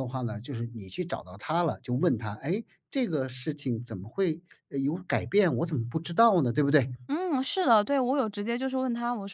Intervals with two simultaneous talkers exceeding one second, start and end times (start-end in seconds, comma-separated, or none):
none